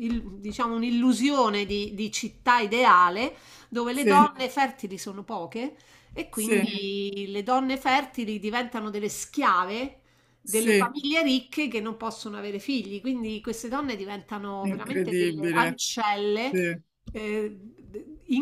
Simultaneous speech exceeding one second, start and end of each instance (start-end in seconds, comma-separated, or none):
14.6-15.8